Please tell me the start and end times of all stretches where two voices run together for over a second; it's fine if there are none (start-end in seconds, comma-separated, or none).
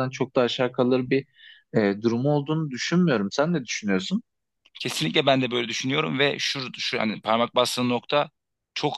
none